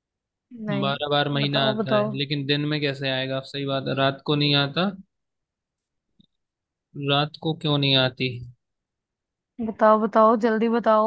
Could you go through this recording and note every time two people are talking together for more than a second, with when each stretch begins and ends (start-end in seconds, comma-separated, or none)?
0.8-2.1